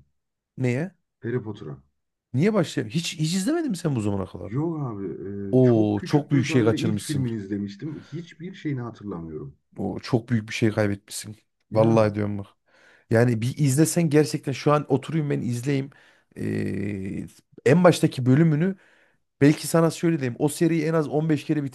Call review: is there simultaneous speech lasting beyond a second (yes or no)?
yes